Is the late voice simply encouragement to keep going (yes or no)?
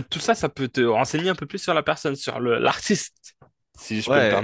no